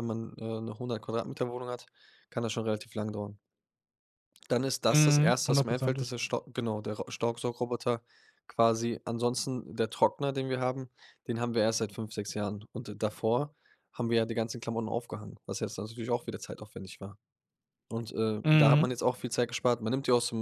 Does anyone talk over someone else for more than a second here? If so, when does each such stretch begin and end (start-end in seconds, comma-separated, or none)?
4.9-6.1